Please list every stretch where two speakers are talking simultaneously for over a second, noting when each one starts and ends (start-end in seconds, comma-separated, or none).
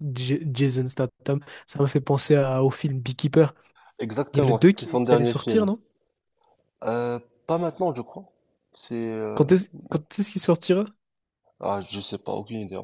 4.3-5.7